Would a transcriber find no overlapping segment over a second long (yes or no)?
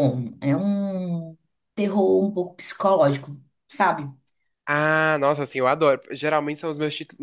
yes